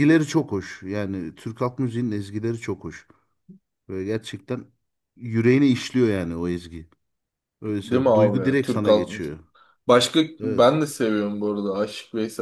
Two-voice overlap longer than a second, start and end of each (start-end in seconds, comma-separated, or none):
7.7-9.4